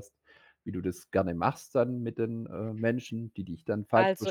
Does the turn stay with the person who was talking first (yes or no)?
no